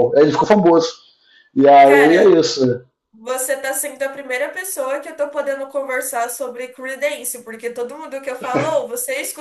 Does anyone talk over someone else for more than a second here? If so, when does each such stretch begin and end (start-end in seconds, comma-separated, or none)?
none